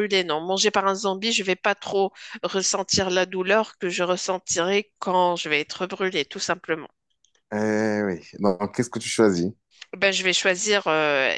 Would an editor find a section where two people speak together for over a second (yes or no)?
no